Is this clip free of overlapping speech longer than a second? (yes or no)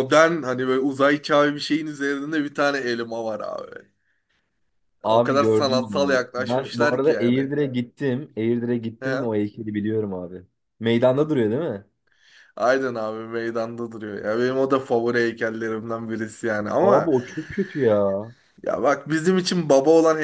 no